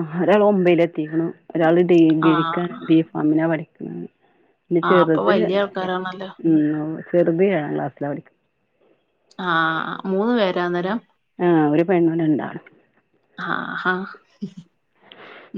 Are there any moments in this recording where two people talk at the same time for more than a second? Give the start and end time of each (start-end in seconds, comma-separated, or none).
none